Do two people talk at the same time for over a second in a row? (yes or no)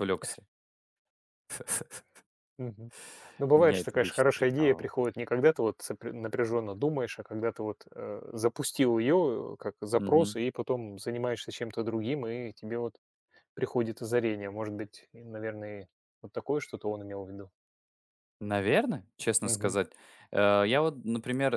yes